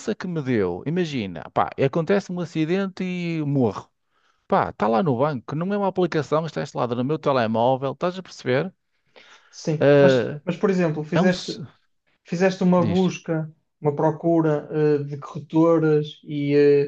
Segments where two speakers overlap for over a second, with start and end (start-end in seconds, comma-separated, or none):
none